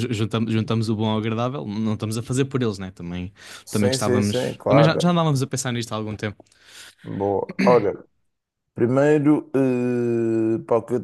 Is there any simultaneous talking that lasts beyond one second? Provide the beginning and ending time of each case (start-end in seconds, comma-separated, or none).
3.7-5.1